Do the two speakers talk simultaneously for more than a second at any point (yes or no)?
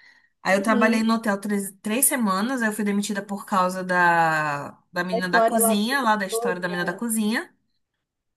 yes